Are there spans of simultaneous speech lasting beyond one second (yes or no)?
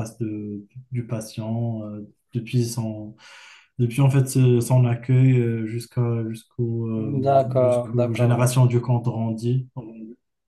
yes